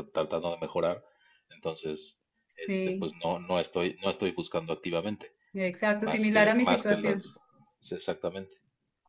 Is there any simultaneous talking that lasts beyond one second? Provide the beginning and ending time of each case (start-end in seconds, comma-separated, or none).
6.0-7.2